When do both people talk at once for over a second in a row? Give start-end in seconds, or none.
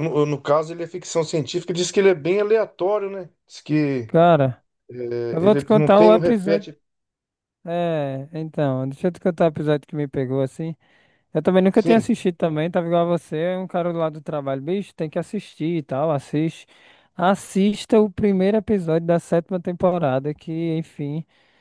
5.4-6.7